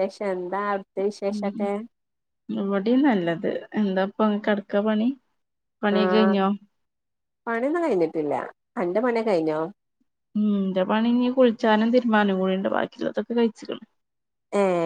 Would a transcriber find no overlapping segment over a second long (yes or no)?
yes